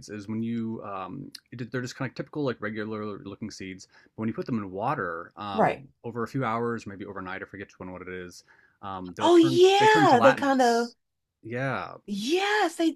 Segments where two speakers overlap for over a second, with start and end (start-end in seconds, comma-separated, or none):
9.2-10.9